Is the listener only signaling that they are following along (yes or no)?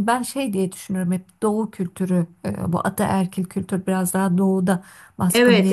no